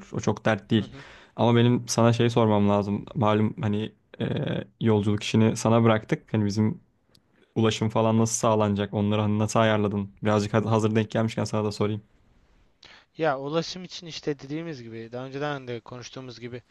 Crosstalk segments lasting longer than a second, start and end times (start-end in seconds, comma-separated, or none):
none